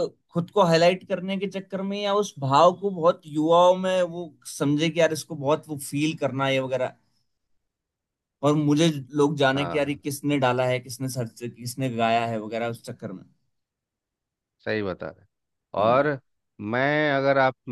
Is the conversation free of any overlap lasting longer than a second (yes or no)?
yes